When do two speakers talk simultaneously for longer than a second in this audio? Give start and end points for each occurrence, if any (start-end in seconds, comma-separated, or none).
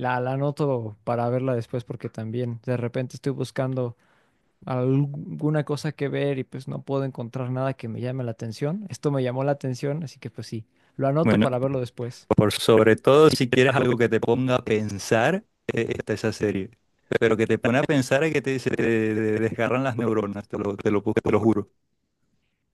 none